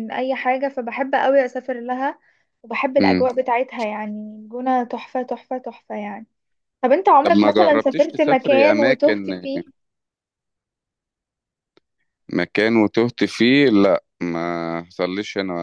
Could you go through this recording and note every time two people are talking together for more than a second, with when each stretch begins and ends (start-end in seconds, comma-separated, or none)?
7.2-9.5